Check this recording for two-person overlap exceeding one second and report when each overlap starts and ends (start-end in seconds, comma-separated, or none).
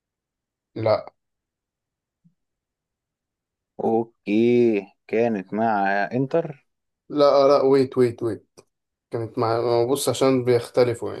none